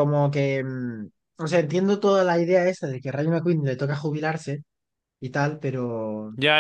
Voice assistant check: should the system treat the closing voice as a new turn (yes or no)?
yes